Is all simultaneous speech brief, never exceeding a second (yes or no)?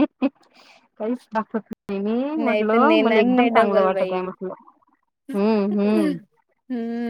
no